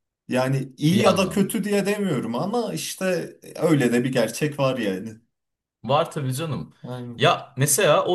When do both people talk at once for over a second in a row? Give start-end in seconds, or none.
none